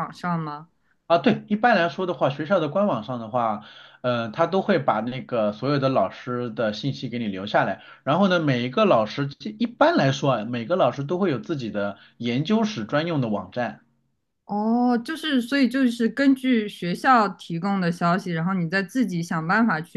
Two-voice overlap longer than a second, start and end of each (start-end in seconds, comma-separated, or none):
none